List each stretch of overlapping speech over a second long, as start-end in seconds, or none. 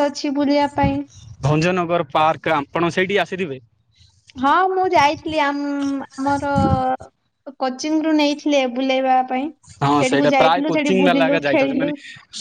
10.0-11.9